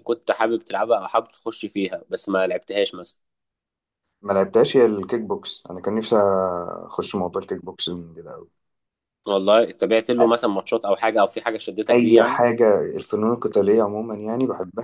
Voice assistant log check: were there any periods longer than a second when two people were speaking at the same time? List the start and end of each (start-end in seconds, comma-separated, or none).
none